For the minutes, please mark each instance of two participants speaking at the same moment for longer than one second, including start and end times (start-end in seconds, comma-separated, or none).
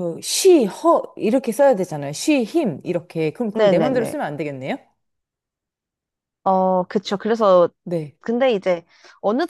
none